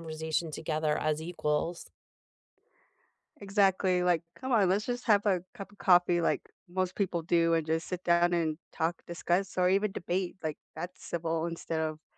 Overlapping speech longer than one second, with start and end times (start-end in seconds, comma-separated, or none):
none